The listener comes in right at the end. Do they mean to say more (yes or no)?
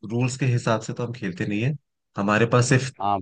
no